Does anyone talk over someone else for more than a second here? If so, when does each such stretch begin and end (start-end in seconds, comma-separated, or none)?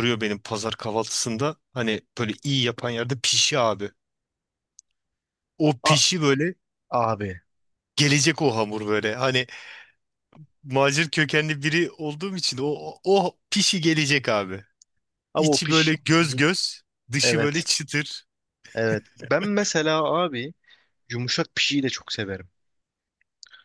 none